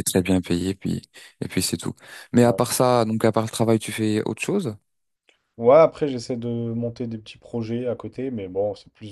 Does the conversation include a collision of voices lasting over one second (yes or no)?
no